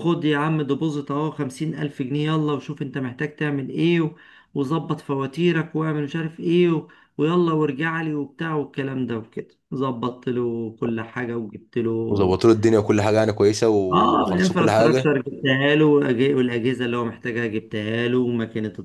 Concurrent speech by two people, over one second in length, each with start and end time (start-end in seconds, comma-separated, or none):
13.8-15.1